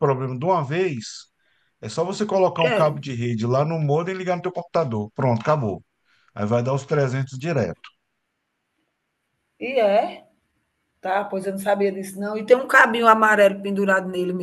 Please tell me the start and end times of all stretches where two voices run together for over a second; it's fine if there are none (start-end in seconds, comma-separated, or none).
none